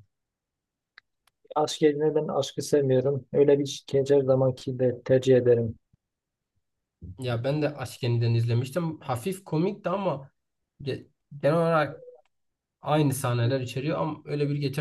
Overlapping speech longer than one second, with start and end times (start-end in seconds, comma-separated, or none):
none